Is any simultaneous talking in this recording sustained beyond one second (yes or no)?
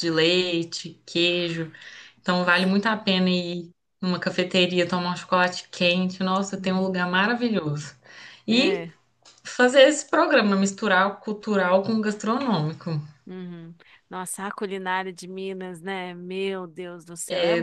no